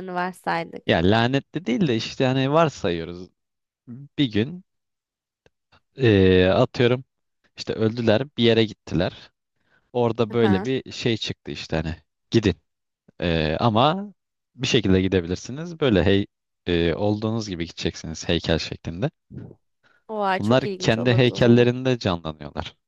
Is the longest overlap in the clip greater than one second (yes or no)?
yes